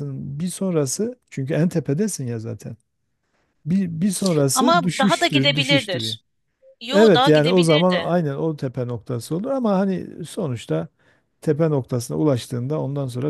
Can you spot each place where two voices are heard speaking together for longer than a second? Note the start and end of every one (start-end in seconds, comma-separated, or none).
4.5-6.2, 6.9-8.2